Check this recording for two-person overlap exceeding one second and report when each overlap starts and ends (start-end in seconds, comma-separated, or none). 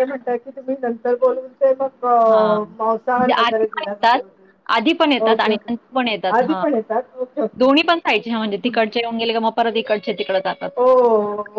2.8-4.2